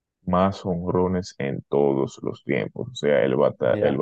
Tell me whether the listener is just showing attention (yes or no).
yes